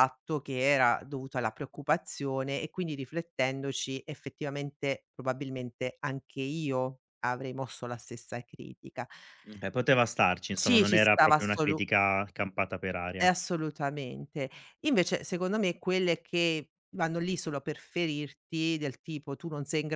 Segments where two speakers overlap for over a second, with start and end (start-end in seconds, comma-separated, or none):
10.5-11.8